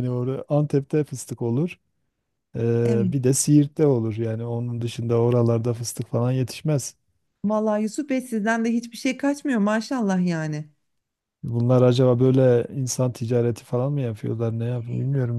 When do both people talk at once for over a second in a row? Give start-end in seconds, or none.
none